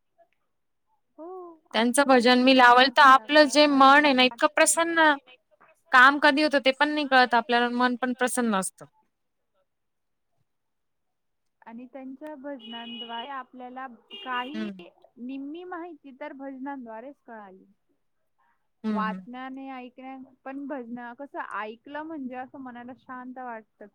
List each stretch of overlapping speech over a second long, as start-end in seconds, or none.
2.6-4.3